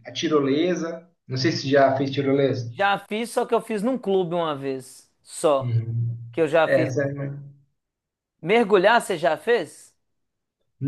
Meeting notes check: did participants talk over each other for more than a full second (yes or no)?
no